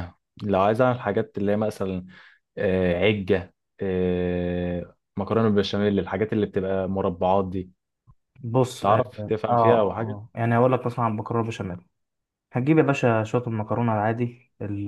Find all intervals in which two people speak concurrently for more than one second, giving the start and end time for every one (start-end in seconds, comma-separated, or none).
8.8-10.2